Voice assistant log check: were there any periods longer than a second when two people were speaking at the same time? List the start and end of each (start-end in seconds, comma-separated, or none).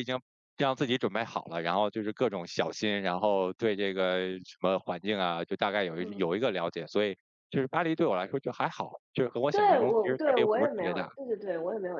9.5-11.1